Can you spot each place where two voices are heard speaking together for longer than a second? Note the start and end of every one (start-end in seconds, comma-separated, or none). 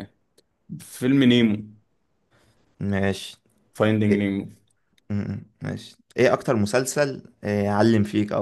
none